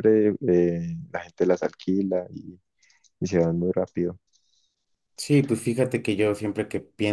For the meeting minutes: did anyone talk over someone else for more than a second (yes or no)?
no